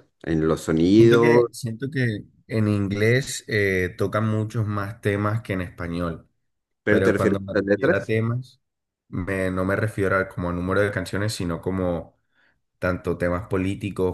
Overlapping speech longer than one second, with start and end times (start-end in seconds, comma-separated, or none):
6.9-8.1